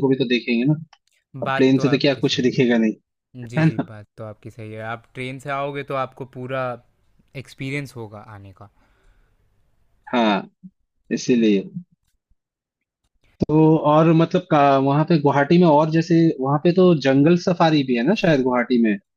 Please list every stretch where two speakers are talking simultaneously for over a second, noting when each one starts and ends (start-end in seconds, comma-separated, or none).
1.4-2.9